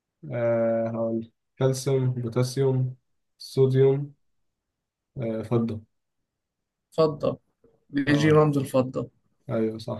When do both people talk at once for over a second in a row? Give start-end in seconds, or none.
none